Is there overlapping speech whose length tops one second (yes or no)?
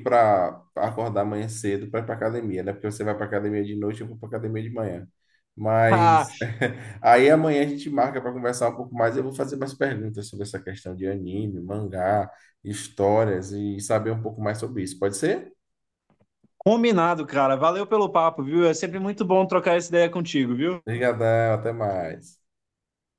no